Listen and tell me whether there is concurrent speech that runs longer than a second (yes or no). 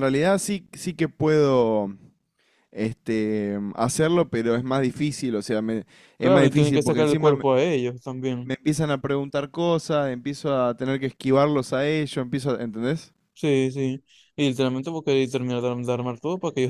yes